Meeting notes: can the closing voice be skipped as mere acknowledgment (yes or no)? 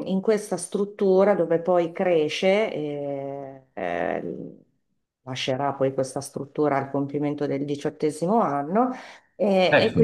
yes